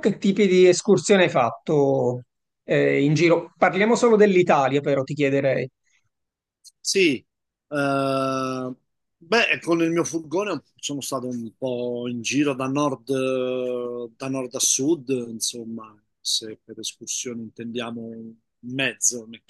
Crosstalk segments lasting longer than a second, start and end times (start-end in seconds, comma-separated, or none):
none